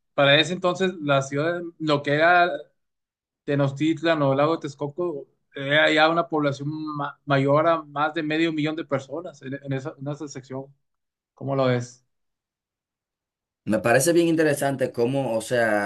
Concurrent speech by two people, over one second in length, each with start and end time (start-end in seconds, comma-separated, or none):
none